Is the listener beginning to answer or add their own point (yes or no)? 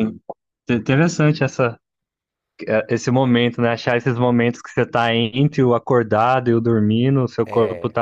no